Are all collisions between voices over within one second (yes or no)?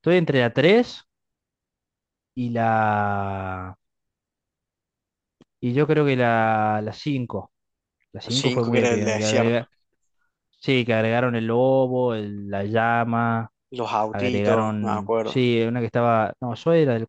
no